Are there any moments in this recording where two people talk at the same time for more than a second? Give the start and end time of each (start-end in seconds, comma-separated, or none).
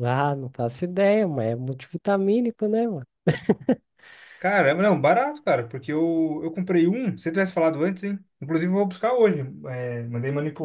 none